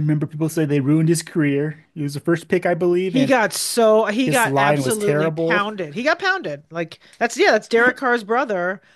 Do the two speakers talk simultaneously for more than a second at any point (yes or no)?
yes